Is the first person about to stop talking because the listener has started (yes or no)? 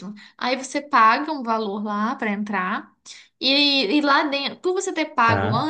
no